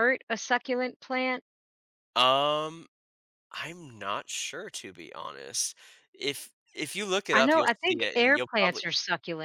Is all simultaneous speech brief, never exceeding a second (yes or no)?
no